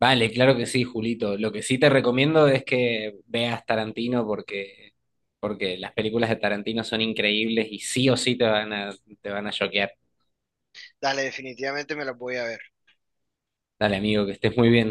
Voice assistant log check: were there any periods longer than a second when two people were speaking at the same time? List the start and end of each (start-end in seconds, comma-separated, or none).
none